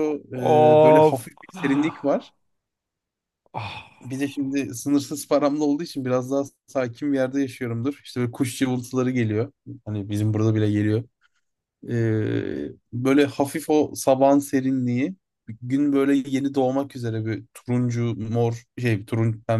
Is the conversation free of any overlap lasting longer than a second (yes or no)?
no